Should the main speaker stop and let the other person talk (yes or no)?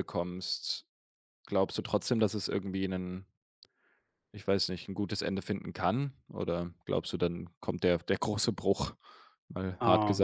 yes